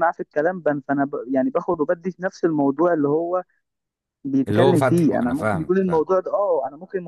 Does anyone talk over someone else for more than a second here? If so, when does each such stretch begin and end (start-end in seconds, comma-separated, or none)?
4.5-6.0